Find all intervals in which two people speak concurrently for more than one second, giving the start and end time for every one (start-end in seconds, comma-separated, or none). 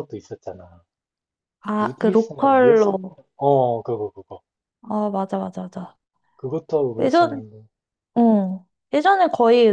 1.8-3.2